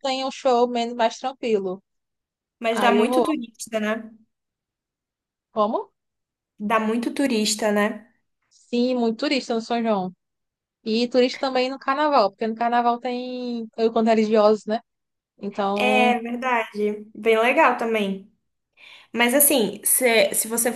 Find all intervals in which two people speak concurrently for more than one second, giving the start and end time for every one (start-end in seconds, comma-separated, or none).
none